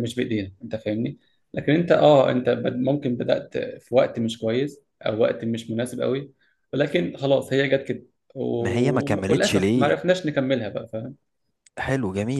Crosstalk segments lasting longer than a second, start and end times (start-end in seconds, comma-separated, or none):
8.6-9.9